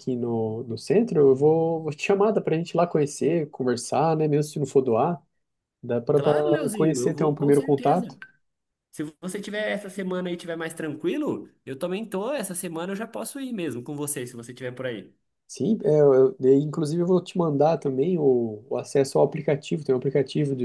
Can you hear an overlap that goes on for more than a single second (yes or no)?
yes